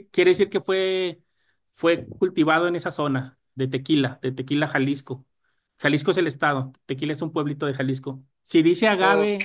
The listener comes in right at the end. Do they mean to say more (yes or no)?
no